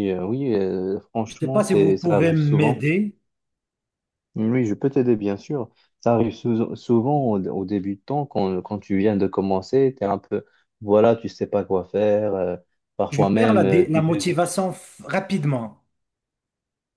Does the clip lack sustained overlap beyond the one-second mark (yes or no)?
no